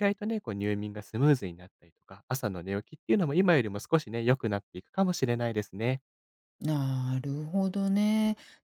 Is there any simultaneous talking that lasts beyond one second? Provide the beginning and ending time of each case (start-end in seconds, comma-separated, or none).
none